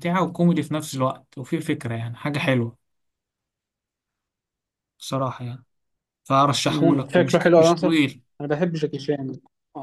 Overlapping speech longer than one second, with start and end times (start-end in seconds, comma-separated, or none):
6.7-8.0